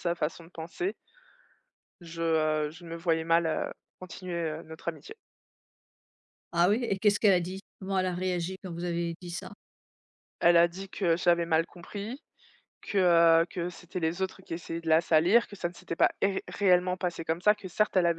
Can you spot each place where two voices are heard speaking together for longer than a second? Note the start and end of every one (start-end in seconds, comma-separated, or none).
none